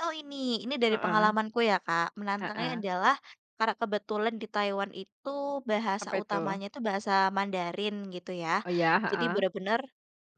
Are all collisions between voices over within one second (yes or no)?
yes